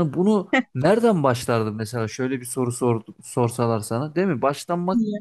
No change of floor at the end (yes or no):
yes